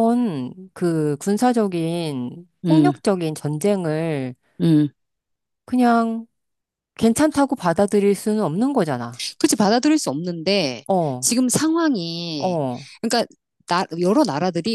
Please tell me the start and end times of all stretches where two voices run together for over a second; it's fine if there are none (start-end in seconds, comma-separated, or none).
none